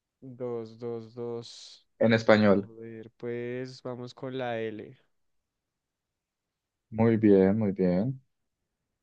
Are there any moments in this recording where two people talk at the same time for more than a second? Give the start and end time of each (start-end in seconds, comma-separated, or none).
none